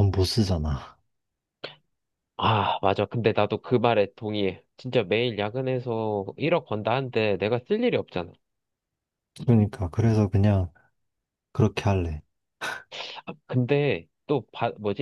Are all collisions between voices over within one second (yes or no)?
yes